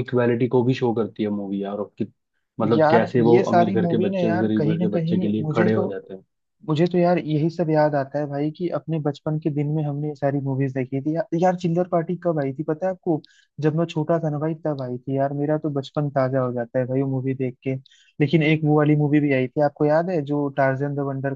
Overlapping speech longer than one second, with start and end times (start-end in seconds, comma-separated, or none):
2.7-5.9